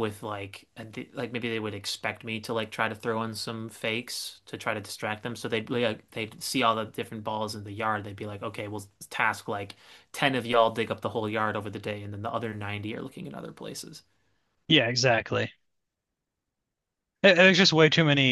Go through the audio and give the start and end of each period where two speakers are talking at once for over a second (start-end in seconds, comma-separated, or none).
none